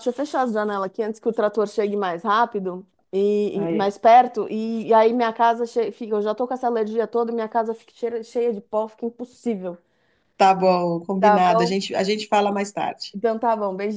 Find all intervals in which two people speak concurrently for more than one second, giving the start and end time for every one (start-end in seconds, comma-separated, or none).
none